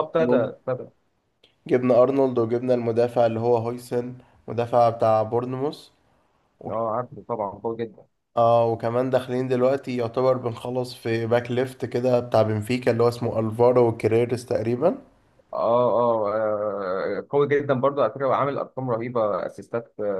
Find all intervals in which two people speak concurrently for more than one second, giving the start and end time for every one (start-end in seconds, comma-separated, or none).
none